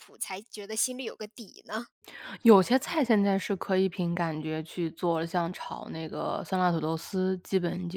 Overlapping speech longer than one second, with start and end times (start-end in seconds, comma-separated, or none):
none